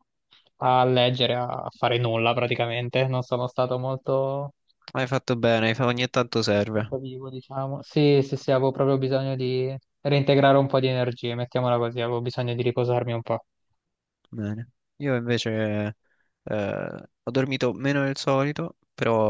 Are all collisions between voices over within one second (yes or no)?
yes